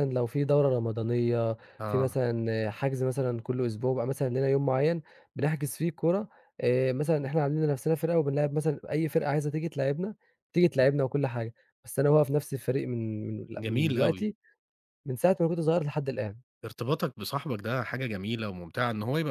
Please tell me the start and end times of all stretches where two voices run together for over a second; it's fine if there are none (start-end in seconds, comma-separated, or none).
none